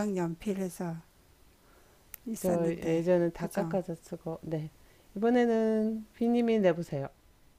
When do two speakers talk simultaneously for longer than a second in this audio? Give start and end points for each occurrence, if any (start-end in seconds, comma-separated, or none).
2.4-3.8